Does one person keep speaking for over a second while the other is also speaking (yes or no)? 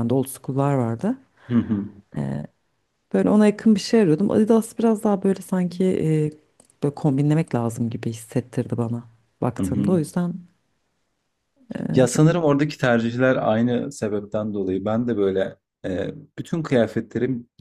no